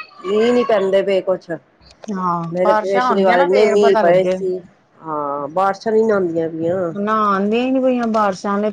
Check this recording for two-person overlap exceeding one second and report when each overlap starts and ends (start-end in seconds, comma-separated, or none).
2.5-4.4